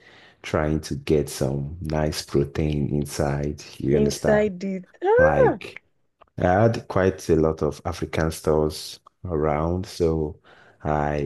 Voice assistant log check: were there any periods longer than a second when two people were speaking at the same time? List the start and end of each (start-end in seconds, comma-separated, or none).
none